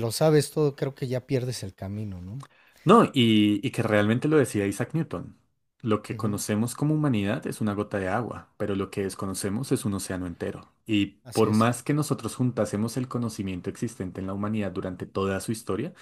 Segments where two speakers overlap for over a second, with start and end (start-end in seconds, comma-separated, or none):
none